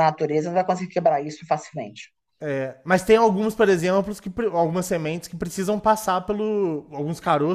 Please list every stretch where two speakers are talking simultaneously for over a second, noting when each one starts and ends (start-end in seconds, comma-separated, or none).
none